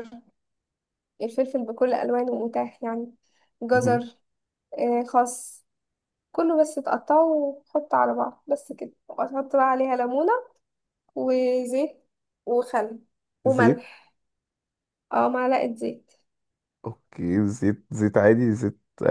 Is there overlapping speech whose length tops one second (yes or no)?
no